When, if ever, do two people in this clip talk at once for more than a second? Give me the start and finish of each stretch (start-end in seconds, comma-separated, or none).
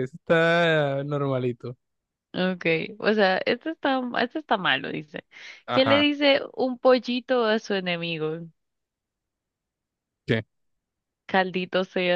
none